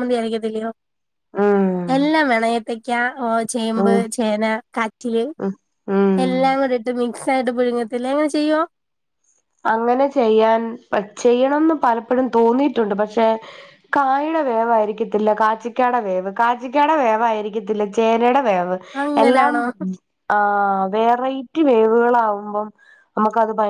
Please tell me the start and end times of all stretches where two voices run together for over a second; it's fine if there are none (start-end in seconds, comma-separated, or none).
none